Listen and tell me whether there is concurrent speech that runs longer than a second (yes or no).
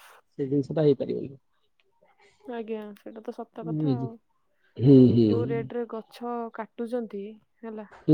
no